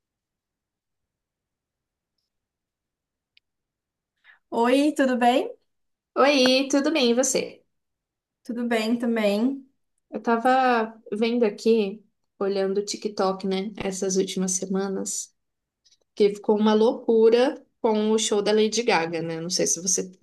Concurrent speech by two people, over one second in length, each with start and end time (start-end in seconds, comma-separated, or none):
none